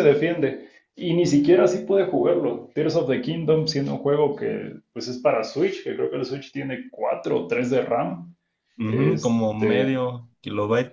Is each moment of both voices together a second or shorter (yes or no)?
no